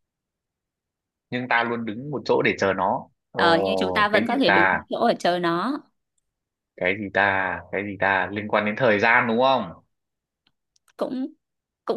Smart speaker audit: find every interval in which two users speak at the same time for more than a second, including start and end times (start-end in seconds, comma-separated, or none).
3.4-4.8